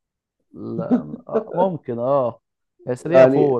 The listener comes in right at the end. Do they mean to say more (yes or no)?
no